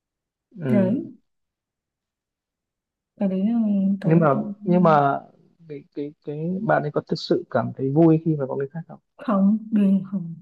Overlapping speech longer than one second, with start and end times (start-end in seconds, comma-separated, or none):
none